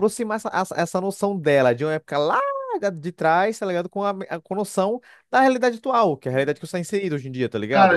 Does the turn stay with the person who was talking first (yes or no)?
no